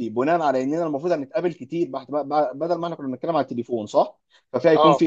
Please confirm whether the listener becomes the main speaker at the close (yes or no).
no